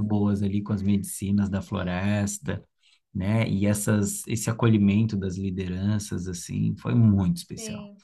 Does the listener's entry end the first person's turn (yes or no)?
no